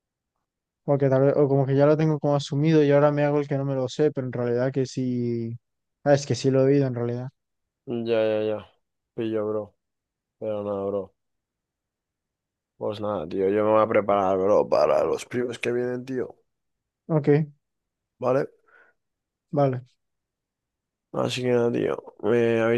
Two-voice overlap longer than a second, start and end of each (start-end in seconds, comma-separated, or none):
none